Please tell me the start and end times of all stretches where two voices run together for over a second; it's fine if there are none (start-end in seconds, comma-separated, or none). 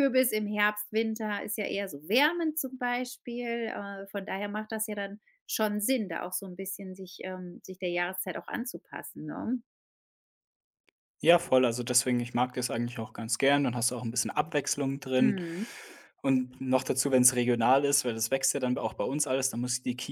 none